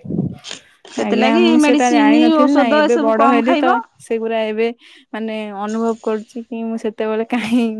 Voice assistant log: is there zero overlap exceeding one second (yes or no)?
no